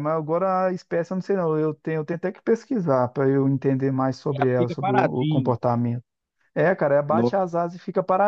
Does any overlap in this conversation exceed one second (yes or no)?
yes